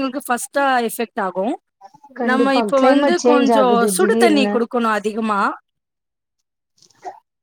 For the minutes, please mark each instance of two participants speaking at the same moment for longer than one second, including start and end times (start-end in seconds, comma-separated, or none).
2.3-4.5